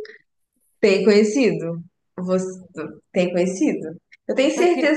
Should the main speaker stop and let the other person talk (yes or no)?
no